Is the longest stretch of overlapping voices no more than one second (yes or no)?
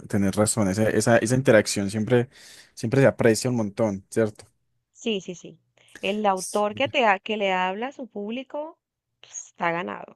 yes